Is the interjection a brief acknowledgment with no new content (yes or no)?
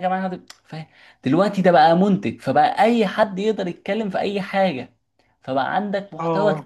yes